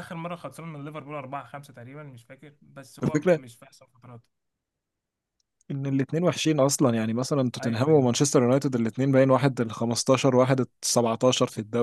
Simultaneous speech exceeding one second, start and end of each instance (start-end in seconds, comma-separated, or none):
none